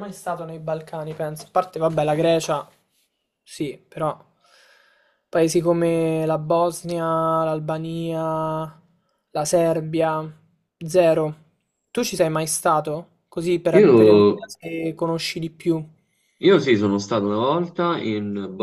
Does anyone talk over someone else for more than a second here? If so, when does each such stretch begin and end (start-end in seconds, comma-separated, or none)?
none